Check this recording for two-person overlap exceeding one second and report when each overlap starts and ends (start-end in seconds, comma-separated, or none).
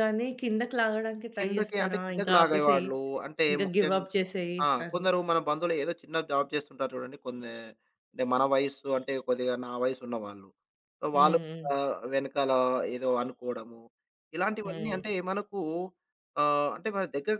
1.4-2.9